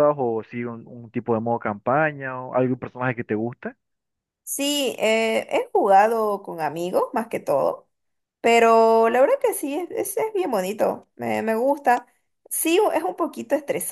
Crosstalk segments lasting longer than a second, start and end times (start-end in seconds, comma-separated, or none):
none